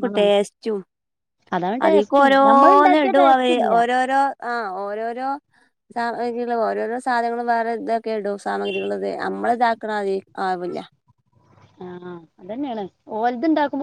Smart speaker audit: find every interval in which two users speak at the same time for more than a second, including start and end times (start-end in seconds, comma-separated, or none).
1.9-3.7